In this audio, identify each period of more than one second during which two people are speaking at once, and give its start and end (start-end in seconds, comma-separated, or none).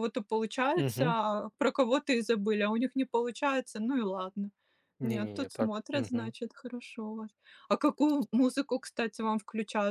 5.0-6.3